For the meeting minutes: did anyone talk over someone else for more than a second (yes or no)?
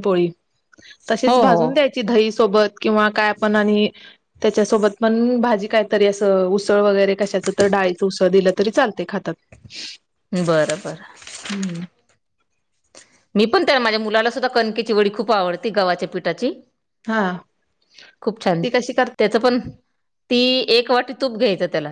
no